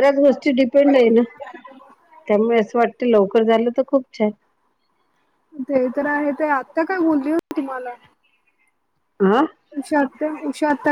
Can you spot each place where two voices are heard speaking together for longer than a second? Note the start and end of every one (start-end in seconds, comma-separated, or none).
none